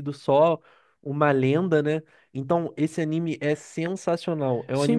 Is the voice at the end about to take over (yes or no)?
yes